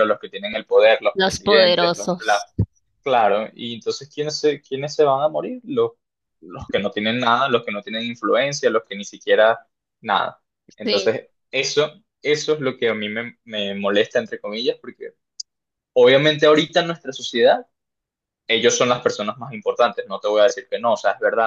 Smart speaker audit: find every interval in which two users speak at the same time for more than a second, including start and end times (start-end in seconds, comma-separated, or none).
1.1-2.4